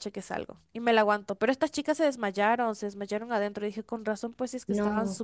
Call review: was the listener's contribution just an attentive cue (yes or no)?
no